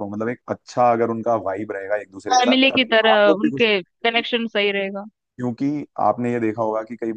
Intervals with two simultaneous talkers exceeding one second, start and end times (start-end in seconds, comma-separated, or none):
2.3-4.2